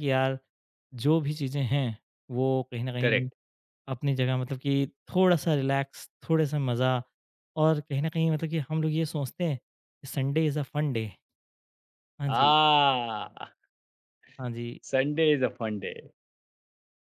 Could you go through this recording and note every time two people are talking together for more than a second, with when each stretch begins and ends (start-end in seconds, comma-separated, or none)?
none